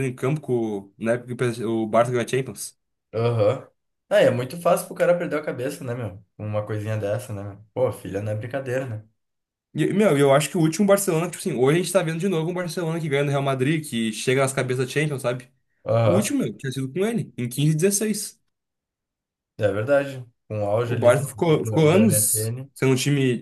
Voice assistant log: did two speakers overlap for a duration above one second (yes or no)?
yes